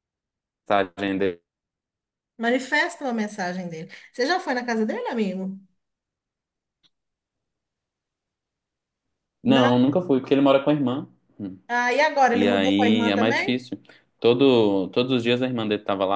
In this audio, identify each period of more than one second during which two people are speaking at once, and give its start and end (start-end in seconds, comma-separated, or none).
12.3-13.6